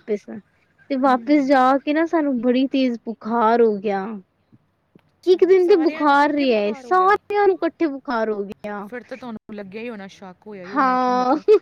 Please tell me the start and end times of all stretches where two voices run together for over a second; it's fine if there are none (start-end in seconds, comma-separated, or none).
5.3-7.2